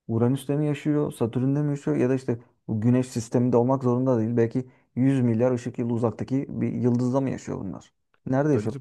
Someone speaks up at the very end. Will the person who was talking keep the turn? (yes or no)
no